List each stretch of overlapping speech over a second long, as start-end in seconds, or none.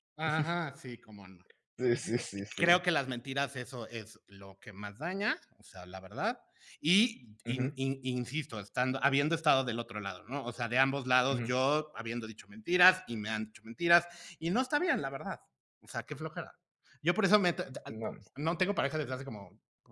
none